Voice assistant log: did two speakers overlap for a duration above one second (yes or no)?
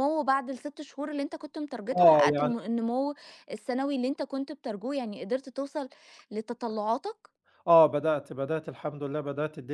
no